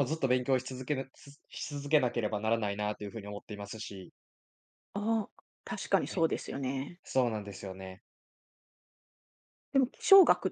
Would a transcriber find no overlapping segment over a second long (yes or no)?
yes